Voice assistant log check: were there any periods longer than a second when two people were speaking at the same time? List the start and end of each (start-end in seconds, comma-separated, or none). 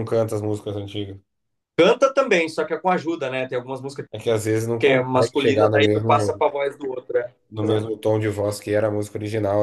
4.8-6.5